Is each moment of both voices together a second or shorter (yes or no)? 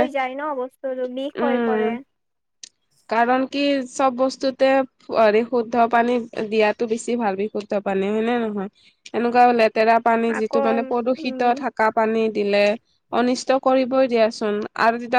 yes